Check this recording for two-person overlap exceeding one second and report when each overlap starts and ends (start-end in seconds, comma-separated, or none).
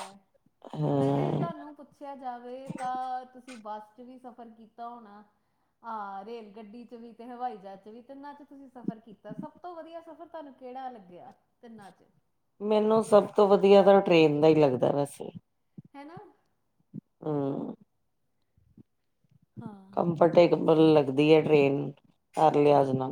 none